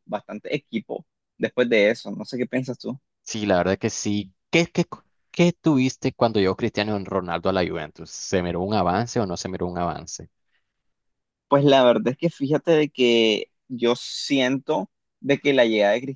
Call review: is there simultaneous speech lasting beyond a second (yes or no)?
no